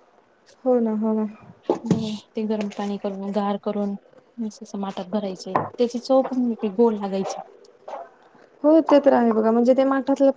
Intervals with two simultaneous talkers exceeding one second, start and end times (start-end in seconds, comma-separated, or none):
none